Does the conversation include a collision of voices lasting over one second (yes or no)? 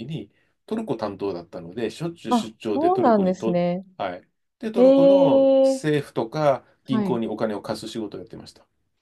yes